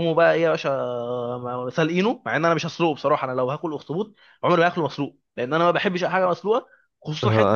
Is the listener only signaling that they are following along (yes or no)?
no